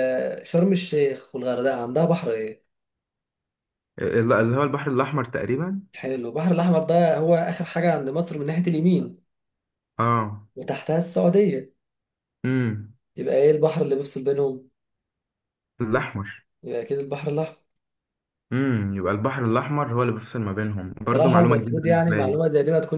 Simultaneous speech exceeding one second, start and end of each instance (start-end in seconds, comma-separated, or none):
21.1-22.4